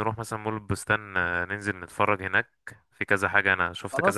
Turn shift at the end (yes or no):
no